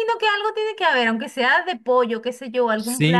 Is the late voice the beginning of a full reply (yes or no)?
yes